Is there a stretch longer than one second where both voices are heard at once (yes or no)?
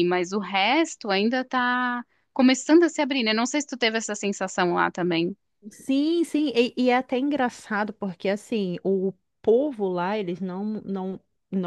no